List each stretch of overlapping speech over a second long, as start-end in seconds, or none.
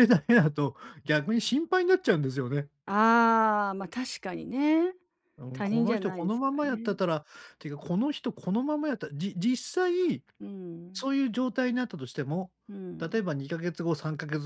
5.5-7.0